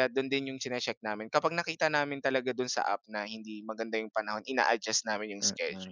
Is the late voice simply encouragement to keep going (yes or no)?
no